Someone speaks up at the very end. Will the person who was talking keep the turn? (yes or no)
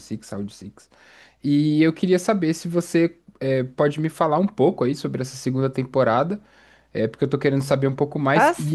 yes